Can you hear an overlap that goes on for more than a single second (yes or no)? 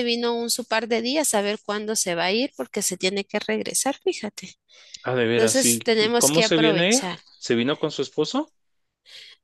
yes